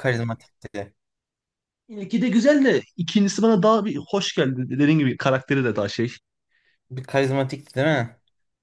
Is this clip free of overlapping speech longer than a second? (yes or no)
yes